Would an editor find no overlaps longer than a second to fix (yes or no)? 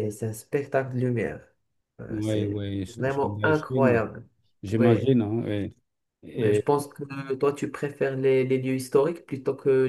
no